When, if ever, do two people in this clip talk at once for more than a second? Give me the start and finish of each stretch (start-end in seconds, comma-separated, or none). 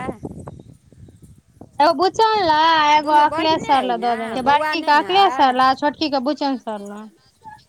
3.0-5.6